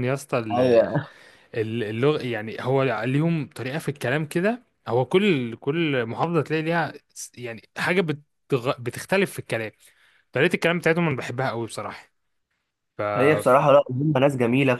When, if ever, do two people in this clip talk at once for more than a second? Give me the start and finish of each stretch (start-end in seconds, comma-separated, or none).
none